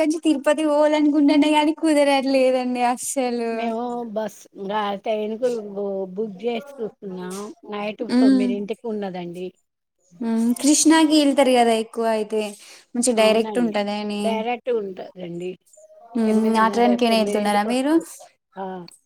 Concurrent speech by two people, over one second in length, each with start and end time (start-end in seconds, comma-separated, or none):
16.3-17.9